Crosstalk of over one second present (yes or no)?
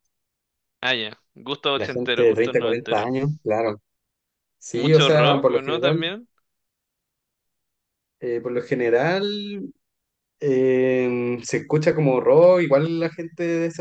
yes